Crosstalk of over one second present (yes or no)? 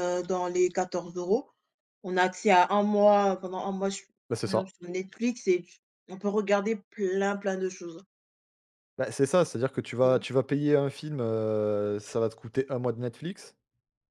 no